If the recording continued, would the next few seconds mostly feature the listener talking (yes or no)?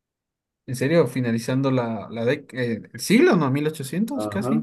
yes